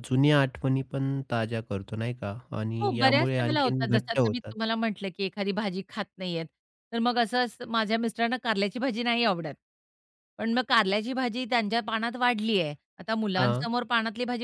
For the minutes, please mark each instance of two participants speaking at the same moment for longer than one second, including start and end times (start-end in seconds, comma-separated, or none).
2.8-4.5